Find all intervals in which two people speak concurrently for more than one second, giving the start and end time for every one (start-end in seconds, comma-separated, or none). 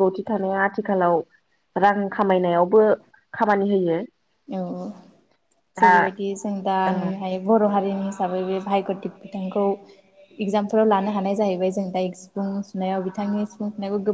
none